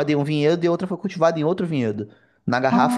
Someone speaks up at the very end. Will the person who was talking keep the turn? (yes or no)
yes